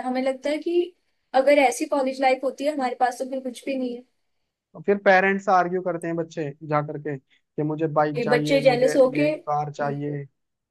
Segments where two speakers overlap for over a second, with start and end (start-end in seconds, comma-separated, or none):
8.2-9.9